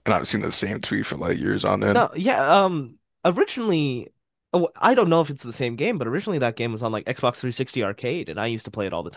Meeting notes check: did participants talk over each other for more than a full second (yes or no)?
no